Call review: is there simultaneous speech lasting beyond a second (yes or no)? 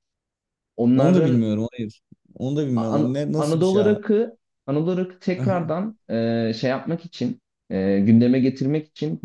yes